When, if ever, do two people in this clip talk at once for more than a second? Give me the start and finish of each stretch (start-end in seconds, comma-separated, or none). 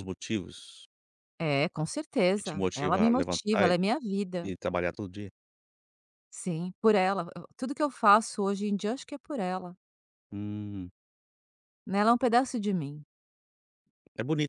2.4-3.7